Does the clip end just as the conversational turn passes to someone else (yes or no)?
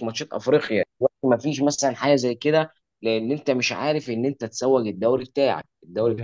no